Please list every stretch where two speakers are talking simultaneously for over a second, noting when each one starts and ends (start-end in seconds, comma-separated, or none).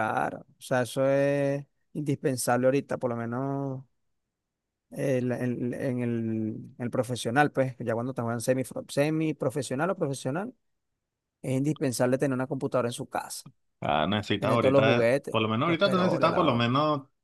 14.4-16.7